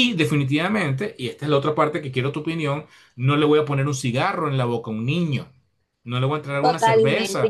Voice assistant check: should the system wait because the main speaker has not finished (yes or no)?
no